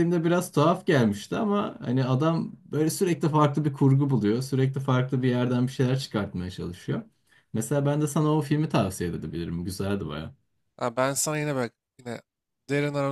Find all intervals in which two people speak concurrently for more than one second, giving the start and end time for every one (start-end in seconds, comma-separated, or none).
none